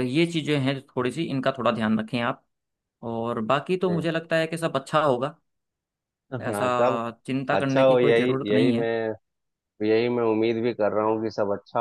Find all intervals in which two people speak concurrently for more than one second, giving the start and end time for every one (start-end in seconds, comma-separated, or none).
7.5-8.9